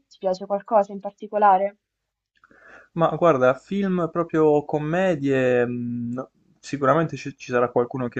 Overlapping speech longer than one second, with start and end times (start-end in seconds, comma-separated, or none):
none